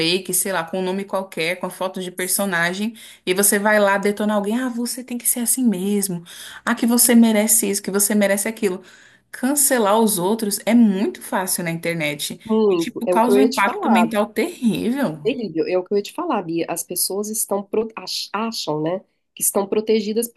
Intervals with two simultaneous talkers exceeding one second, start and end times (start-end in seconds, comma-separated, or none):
12.4-14.1